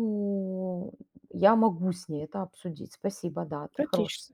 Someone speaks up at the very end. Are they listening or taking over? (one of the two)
taking over